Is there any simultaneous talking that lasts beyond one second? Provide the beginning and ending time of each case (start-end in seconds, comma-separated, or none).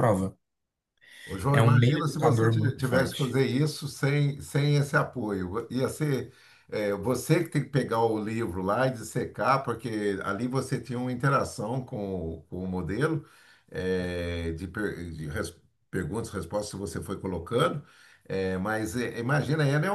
1.5-3.4